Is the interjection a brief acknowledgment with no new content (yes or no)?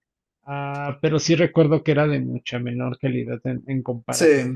yes